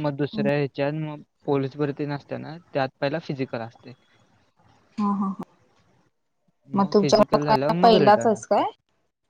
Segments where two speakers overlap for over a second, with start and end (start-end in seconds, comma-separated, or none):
6.9-8.6